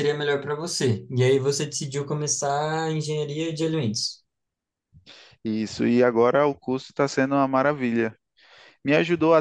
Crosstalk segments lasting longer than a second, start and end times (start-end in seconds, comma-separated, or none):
none